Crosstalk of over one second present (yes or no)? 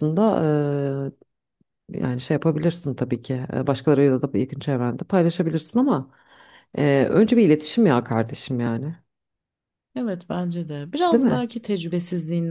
no